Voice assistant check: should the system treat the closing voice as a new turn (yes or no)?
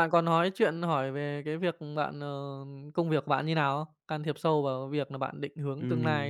yes